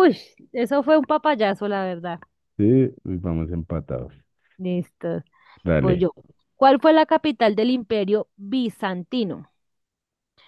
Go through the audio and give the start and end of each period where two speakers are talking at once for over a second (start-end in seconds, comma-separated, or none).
none